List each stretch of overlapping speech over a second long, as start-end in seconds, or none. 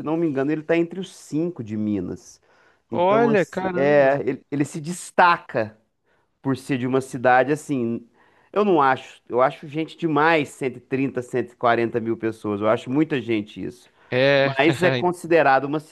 2.9-4.2